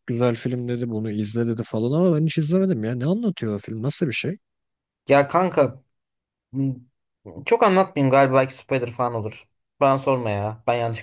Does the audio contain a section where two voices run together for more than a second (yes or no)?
no